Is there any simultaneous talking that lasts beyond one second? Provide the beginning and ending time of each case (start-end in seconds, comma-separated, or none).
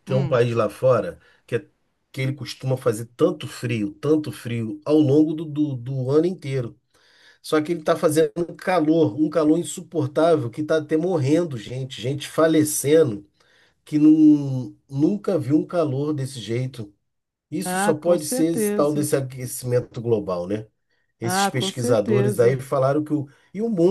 17.6-19.1, 21.2-22.6